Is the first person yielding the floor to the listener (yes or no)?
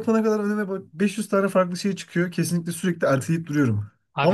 no